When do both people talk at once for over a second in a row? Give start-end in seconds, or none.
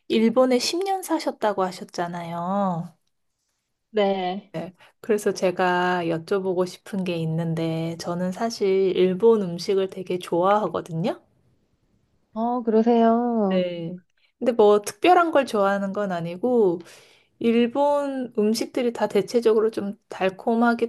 none